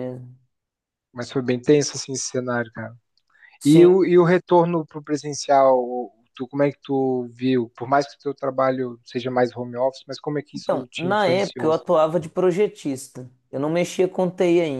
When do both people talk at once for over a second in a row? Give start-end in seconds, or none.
10.6-11.8